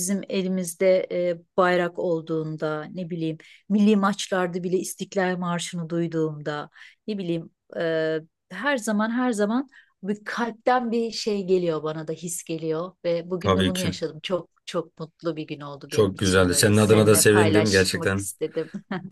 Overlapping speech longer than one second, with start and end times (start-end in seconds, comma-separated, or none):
15.9-18.3